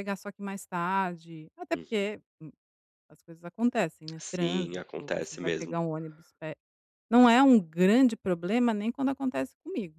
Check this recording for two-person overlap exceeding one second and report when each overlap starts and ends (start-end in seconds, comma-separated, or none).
4.2-5.7